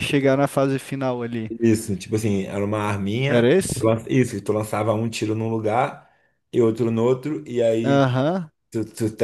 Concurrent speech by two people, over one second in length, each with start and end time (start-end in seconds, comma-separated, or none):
none